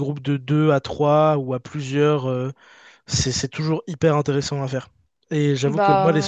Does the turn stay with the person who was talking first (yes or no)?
yes